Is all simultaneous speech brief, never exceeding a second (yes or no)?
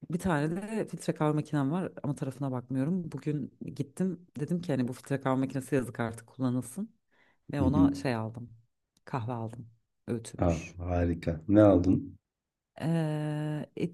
yes